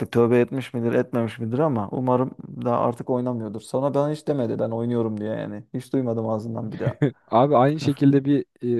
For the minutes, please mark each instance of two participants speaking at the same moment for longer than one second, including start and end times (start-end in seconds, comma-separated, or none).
none